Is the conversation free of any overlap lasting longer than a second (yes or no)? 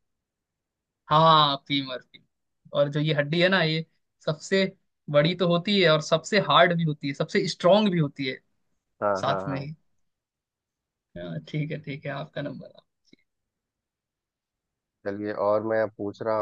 yes